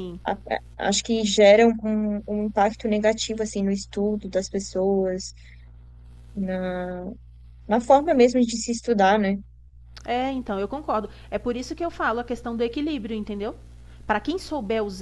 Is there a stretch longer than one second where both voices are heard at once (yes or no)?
no